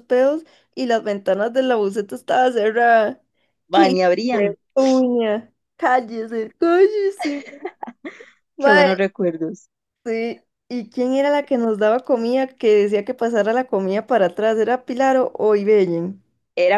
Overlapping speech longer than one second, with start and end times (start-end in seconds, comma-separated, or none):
none